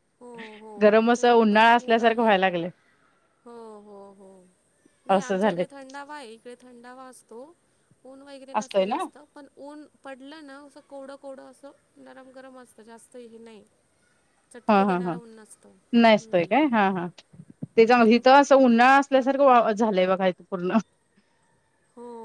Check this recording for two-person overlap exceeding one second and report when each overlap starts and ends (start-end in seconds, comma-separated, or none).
0.8-2.3